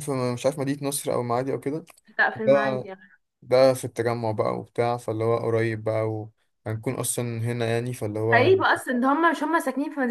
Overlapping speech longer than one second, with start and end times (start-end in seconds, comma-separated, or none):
none